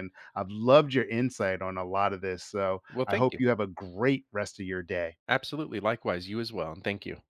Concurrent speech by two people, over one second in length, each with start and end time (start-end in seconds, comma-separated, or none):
none